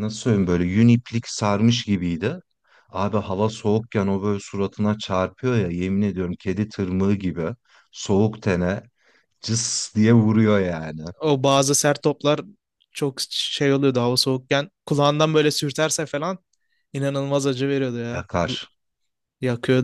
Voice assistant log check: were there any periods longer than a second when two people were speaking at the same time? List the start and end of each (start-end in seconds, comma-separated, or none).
none